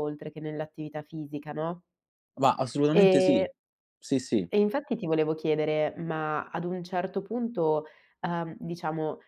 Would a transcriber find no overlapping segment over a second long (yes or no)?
yes